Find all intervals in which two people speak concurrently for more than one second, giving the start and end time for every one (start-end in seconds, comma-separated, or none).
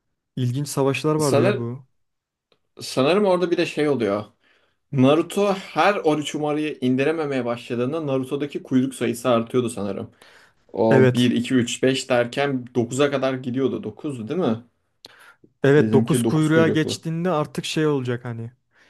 15.8-17.1